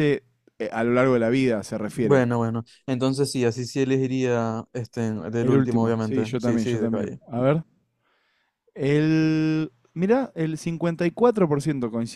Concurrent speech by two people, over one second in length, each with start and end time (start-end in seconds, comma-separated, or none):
5.4-7.2